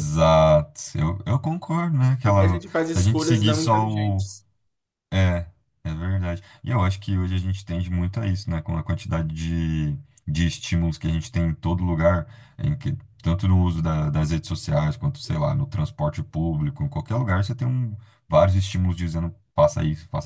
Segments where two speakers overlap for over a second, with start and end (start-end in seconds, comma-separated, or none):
2.2-4.2